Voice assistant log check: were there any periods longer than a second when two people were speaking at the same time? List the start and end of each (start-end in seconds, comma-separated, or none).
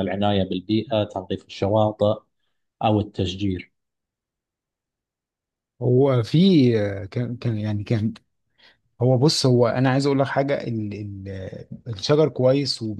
none